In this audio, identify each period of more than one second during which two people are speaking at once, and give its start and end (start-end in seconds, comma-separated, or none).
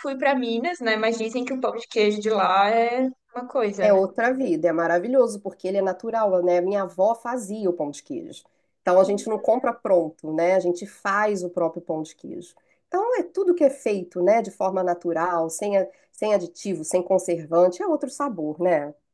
none